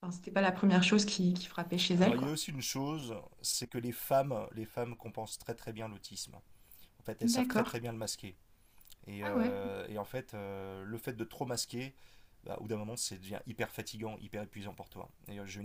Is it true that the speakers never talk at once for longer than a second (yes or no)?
yes